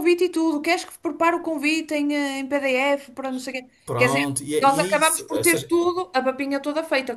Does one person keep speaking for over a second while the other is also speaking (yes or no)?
yes